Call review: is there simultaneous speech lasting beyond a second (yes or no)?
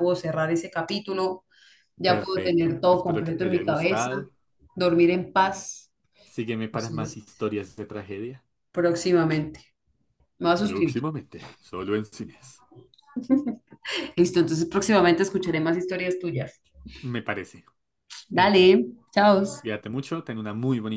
yes